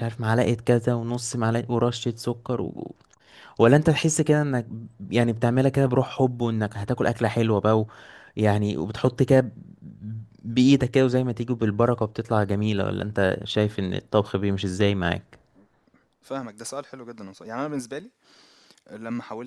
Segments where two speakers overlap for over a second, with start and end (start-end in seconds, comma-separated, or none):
none